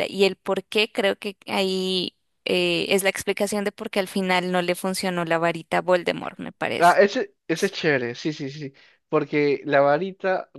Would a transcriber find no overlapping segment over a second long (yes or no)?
yes